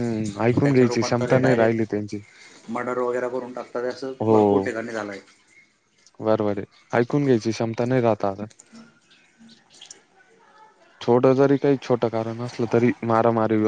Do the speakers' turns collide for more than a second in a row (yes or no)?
yes